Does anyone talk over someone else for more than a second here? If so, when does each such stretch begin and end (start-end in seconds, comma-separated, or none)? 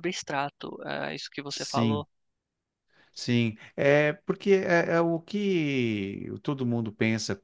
none